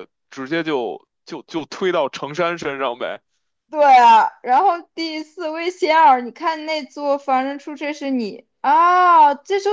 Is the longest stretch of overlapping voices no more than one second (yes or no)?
yes